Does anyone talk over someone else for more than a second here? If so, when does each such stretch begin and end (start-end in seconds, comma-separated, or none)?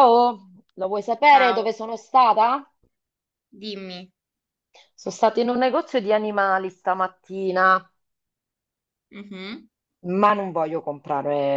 none